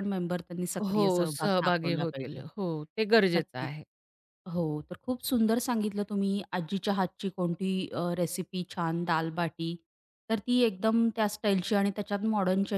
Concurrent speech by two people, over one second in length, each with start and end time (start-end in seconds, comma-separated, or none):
0.9-2.4